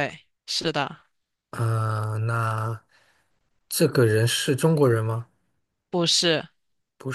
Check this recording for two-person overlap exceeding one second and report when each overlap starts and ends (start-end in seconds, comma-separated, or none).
none